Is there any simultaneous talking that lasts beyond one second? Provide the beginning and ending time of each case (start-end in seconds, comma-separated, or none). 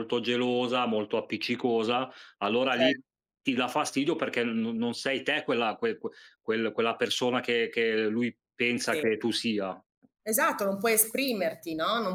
none